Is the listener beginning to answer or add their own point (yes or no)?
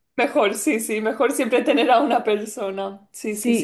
yes